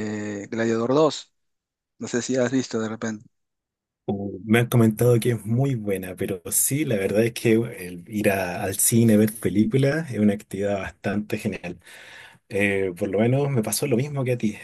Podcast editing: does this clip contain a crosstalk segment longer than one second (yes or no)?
no